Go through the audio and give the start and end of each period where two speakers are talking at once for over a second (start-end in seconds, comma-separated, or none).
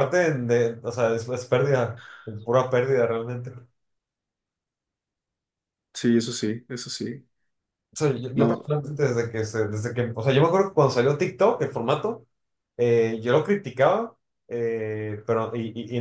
none